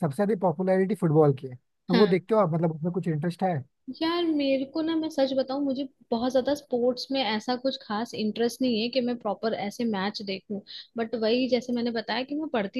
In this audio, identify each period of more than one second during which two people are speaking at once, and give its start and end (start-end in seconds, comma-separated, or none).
none